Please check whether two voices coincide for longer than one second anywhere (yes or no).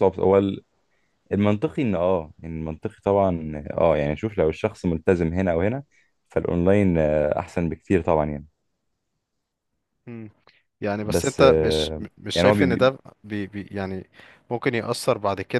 yes